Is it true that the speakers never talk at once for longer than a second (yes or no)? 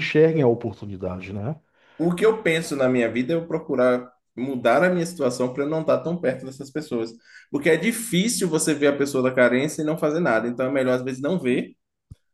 yes